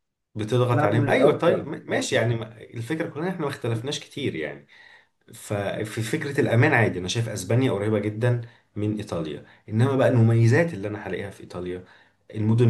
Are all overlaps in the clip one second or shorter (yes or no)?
no